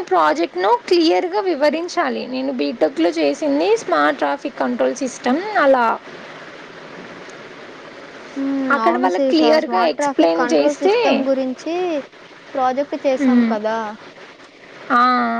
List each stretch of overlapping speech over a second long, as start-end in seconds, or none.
8.8-10.9